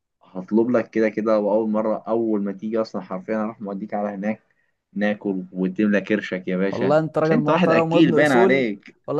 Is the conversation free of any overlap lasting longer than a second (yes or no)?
no